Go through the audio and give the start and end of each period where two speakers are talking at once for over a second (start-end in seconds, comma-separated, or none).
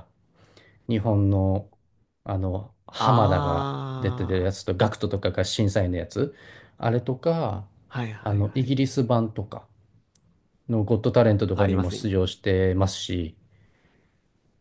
3.0-4.5